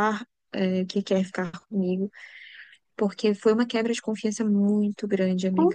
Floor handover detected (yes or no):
yes